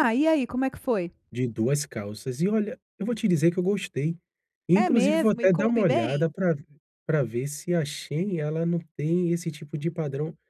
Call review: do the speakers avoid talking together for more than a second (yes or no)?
no